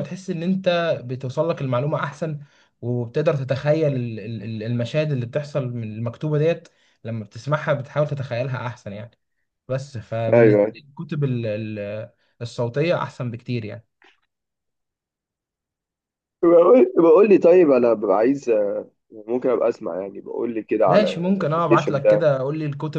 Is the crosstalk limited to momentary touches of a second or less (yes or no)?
no